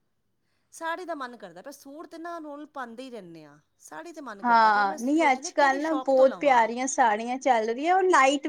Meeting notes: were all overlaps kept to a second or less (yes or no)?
no